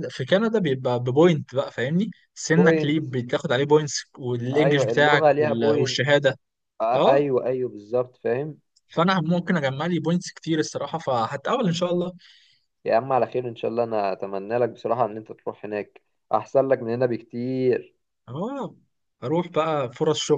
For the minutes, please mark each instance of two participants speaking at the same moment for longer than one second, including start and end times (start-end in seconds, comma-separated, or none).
4.5-6.1